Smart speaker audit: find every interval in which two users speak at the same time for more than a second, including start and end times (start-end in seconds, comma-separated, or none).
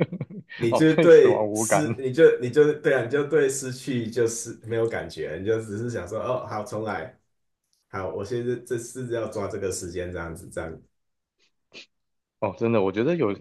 0.7-2.0